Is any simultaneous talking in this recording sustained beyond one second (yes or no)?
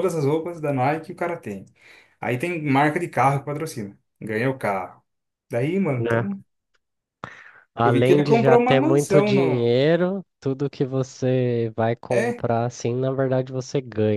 yes